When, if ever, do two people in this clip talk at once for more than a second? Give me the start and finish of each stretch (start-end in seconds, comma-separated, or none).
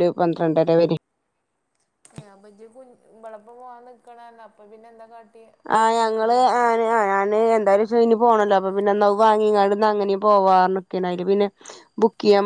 none